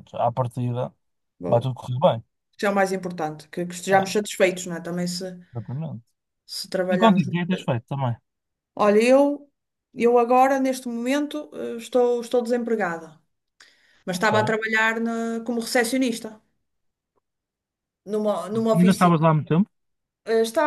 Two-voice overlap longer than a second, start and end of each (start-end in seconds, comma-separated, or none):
none